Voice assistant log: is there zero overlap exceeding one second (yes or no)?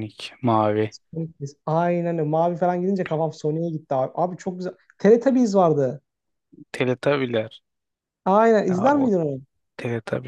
yes